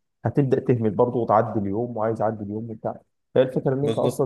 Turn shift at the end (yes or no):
no